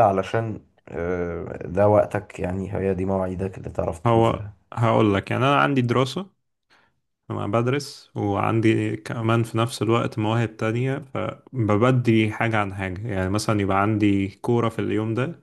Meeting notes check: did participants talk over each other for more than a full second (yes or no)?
no